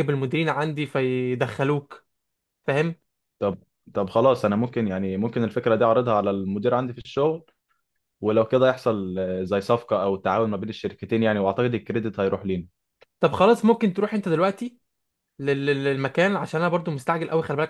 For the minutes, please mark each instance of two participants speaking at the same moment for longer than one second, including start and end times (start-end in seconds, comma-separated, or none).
none